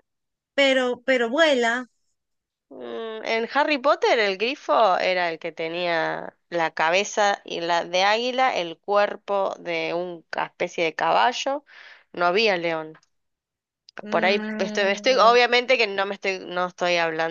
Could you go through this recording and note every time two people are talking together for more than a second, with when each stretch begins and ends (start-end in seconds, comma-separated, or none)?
14.1-15.4